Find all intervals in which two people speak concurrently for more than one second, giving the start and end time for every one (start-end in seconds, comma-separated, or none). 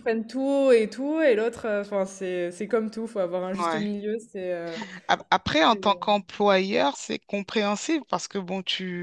none